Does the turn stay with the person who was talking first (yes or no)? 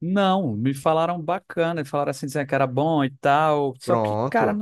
yes